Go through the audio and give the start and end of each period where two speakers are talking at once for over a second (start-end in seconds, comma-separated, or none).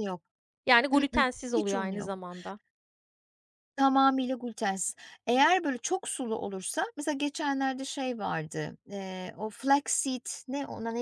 0.9-2.2